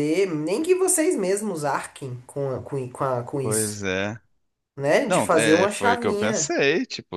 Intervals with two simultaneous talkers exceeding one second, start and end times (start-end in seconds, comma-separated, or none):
5.1-6.5